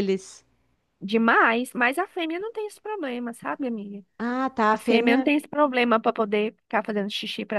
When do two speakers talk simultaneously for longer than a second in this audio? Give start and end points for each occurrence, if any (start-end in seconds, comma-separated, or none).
none